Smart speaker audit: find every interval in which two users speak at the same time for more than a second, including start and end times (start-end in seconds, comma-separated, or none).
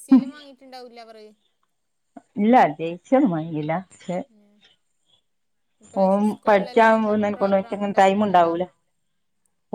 6.5-8.5